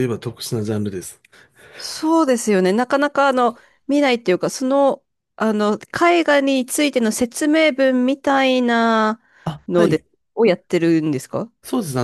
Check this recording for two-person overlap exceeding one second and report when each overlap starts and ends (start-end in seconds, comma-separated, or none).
none